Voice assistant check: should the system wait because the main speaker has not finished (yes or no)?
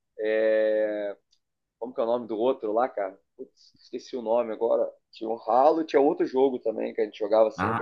no